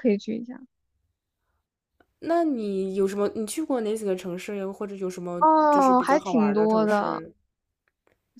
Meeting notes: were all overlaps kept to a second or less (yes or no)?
no